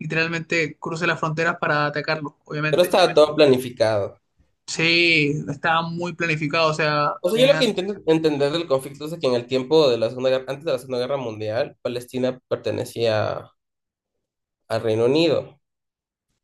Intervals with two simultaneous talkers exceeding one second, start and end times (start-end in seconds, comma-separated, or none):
none